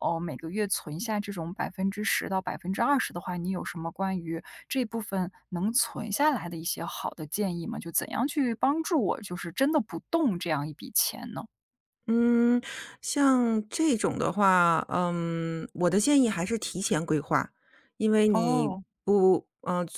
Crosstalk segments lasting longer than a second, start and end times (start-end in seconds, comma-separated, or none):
none